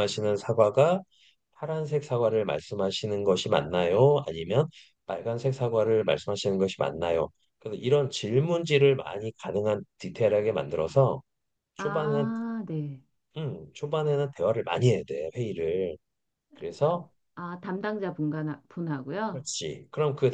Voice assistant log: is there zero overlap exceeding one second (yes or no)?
yes